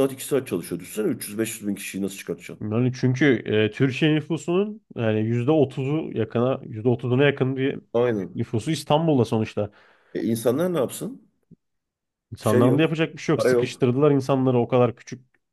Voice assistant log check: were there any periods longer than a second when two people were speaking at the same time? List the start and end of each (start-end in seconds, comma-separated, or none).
12.4-13.8